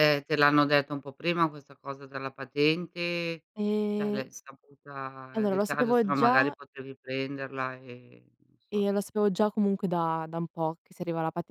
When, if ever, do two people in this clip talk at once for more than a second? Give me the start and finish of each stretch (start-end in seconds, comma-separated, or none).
5.3-6.6